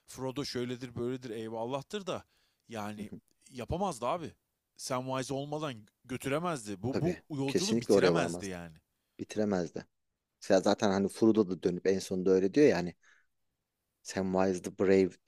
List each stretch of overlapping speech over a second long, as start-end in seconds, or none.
6.9-8.6